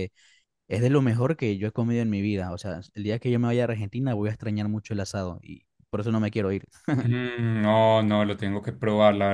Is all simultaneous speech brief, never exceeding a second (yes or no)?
yes